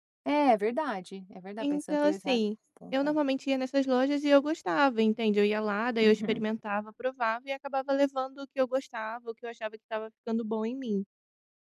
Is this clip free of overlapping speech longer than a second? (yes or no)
no